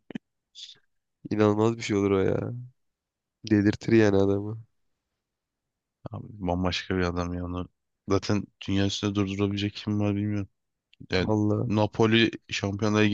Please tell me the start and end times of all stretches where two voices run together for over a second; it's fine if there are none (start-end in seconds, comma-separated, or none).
none